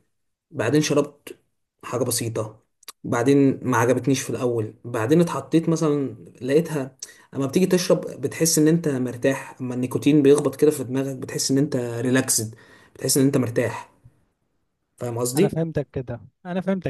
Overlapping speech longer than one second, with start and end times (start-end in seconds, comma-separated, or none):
none